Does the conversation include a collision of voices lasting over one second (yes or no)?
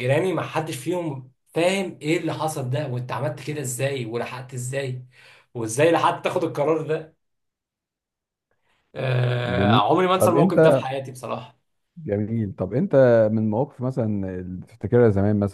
yes